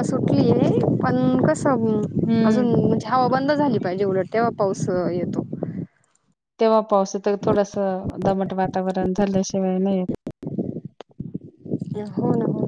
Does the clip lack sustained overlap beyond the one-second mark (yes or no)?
yes